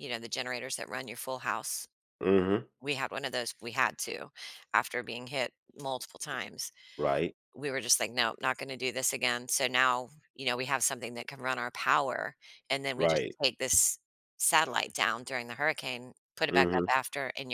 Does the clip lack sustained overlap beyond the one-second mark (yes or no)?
yes